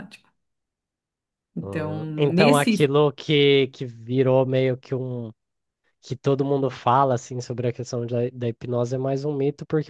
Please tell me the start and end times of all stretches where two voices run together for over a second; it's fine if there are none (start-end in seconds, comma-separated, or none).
1.6-2.9